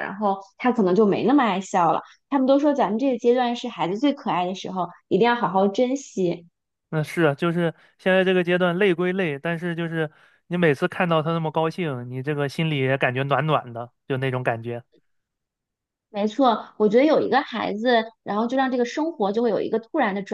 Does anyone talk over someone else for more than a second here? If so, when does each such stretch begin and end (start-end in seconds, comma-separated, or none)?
none